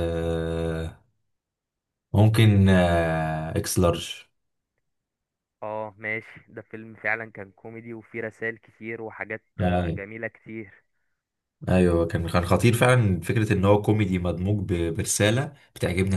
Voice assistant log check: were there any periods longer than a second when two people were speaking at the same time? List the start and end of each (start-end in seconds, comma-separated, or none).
none